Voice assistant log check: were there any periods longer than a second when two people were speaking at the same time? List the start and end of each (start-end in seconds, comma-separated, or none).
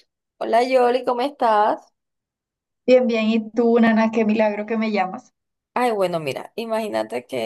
none